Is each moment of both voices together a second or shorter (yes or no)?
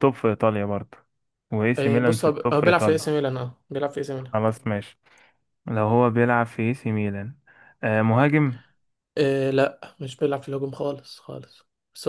no